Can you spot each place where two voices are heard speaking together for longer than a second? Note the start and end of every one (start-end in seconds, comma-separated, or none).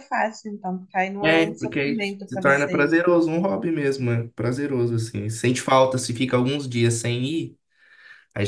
1.2-3.0